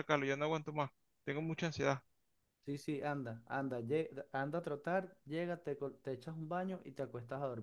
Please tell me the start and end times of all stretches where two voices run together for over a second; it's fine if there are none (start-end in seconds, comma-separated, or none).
none